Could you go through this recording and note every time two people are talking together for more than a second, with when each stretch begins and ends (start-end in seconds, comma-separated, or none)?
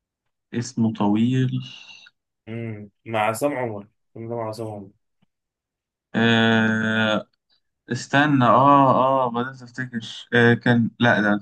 none